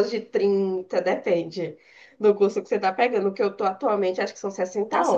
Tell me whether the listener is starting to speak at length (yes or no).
yes